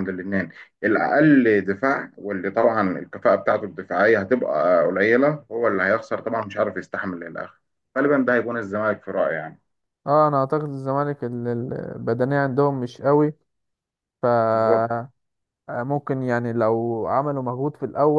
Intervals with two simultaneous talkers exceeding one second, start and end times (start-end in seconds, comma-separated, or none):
none